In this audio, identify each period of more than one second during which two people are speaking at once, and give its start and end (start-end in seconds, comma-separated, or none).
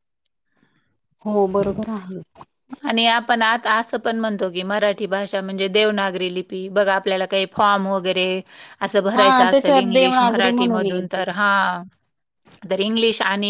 9.2-11.2